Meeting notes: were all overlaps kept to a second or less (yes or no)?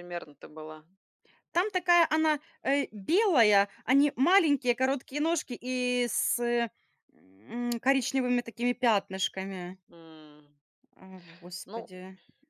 yes